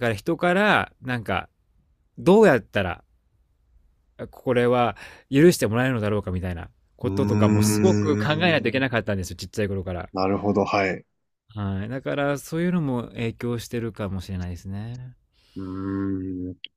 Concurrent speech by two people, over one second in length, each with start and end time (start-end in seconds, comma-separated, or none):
7.0-8.3